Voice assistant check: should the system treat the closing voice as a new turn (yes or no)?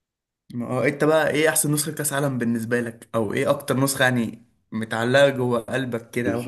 yes